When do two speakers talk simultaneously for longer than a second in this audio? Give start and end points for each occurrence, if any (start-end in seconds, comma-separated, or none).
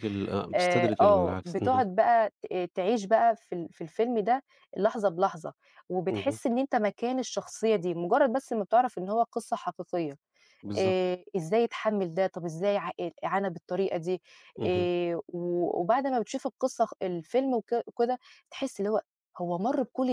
0.5-1.8